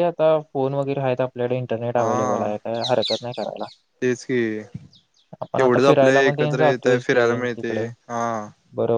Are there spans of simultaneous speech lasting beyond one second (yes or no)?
yes